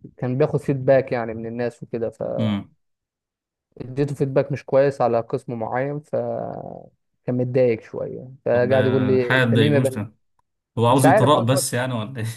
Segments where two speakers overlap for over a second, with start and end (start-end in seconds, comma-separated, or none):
8.5-10.0